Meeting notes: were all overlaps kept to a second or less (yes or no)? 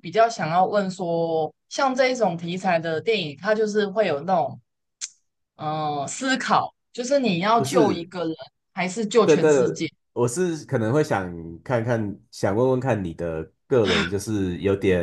yes